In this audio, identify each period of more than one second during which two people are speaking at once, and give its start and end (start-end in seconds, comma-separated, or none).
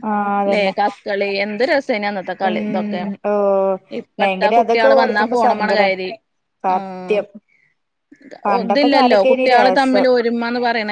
4.2-6.0, 8.4-10.1